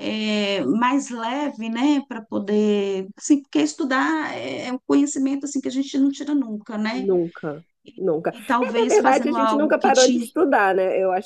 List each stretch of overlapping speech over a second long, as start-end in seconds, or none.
8.3-10.3